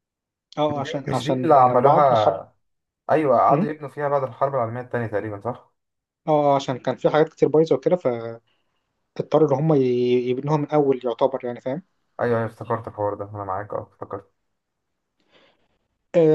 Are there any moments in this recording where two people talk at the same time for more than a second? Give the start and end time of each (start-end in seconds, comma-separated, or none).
0.7-2.5